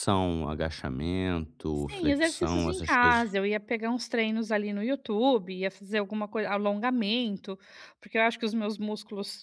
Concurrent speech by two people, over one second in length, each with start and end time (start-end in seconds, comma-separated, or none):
1.7-3.2